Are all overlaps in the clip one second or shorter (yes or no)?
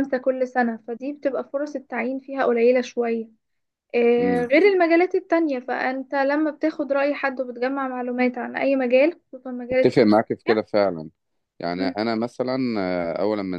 yes